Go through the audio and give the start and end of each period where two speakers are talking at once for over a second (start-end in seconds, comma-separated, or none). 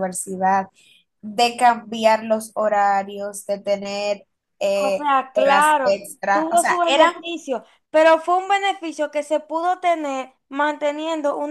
4.7-7.1